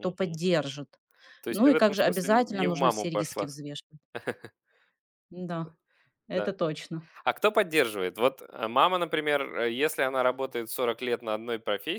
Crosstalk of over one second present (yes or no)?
yes